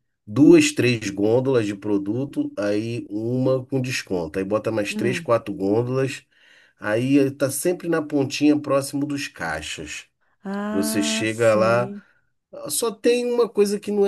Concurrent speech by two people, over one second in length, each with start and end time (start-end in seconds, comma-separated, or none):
10.7-11.9